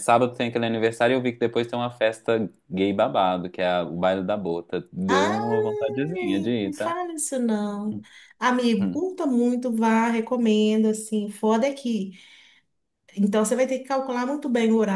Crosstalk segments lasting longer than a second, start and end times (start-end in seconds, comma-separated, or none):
5.1-7.0